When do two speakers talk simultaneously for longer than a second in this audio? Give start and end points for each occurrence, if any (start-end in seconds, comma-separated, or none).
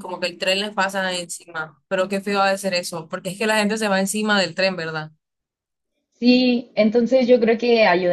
none